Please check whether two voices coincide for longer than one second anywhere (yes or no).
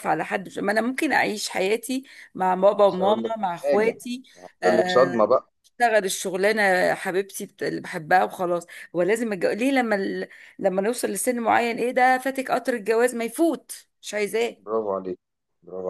yes